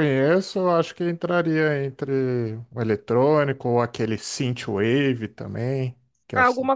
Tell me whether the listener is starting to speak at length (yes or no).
yes